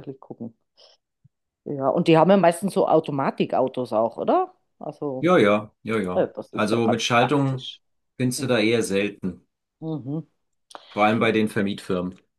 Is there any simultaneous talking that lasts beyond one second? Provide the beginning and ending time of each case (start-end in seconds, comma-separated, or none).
6.1-7.6